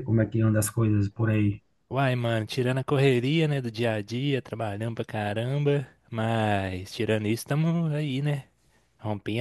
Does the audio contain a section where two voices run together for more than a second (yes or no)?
no